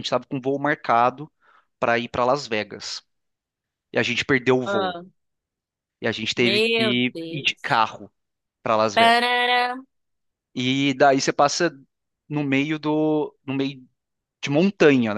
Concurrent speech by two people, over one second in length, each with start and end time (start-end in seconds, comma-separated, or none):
6.3-7.8